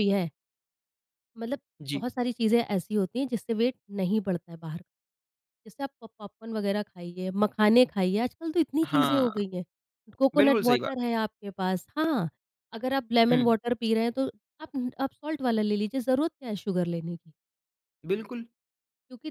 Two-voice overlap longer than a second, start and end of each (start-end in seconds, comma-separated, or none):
none